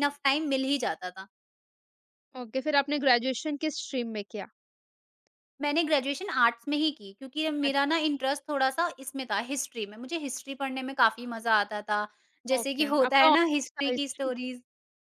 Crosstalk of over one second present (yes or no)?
yes